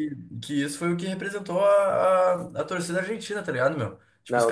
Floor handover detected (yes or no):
no